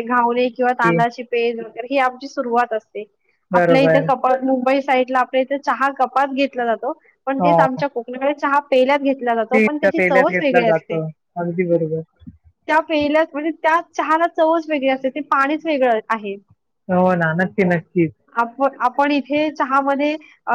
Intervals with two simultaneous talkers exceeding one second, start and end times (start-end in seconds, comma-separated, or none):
9.4-11.0